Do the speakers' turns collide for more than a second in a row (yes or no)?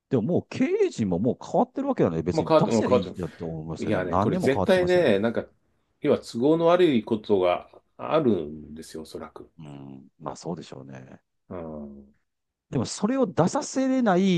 yes